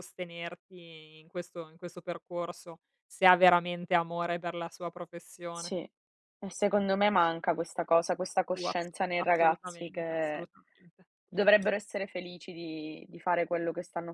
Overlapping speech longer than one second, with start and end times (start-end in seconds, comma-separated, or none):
8.5-10.5